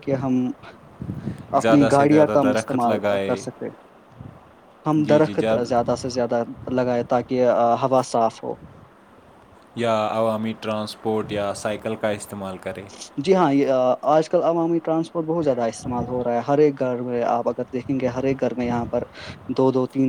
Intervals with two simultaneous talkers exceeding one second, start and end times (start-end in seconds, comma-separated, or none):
1.6-3.3